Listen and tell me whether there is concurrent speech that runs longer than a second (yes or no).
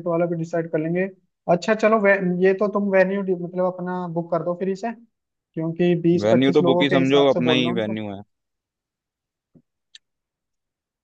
yes